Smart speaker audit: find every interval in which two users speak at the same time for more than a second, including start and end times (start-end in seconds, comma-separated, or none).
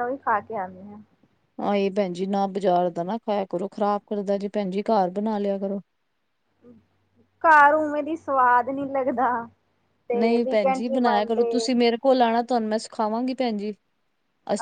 10.1-11.7